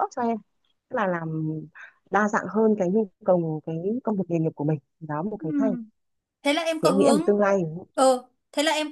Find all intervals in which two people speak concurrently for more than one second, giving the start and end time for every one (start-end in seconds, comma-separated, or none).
none